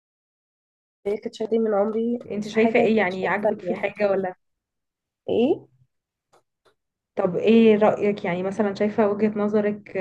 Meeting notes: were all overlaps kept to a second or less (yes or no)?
no